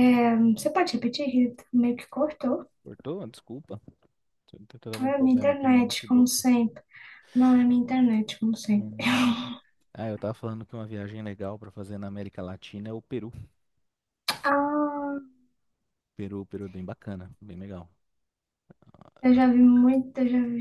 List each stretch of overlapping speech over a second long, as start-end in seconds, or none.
5.0-6.4